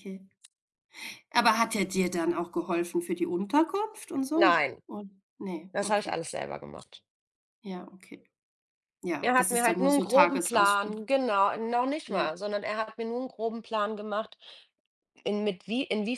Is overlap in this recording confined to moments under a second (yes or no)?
no